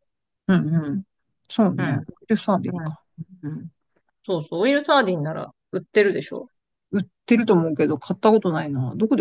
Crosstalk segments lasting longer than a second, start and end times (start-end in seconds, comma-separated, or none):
none